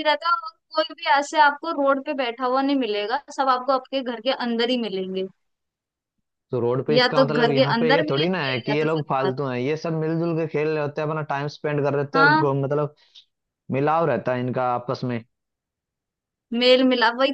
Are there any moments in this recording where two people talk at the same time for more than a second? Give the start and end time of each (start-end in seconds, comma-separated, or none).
6.9-9.3